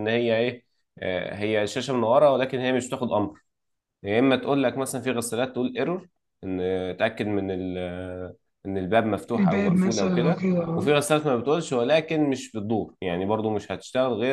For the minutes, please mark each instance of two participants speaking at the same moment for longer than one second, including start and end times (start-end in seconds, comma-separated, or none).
9.3-11.0